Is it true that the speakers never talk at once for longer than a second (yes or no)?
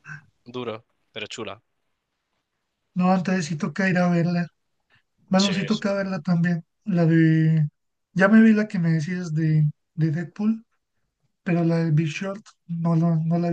yes